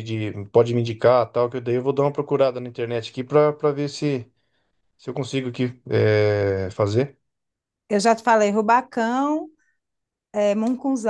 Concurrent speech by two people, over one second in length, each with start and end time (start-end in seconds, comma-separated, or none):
none